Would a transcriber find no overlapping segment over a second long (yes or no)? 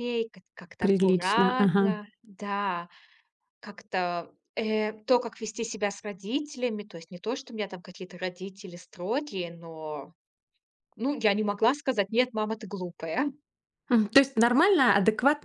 no